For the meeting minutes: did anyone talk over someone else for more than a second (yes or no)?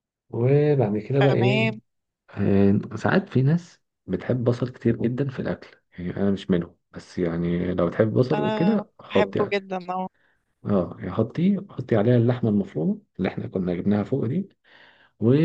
yes